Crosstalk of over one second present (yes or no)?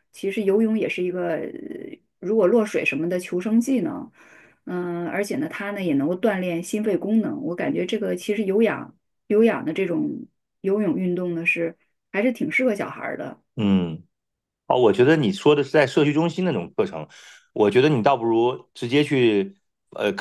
no